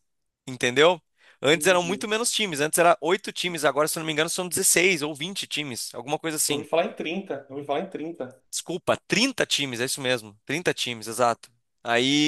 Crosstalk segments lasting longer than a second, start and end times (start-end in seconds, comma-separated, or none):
none